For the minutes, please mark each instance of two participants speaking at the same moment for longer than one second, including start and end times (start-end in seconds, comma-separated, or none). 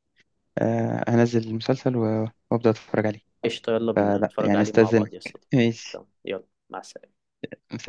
4.0-6.0